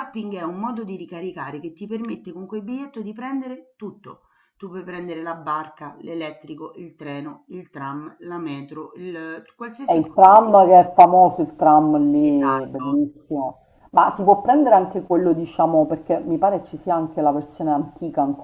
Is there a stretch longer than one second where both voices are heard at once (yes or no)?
no